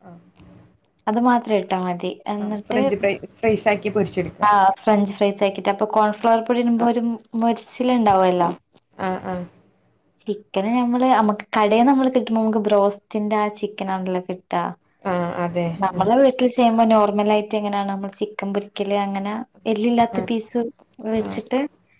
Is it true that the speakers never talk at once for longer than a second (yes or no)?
yes